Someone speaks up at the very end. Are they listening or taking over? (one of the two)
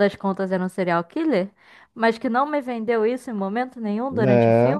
listening